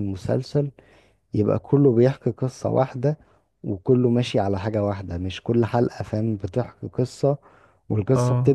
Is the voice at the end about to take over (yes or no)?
no